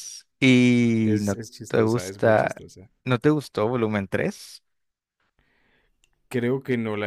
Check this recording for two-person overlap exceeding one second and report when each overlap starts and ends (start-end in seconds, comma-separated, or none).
1.0-2.6